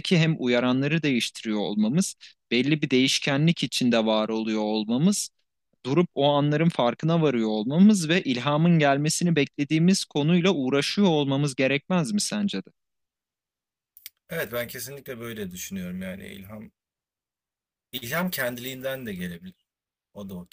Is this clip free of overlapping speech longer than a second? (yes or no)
yes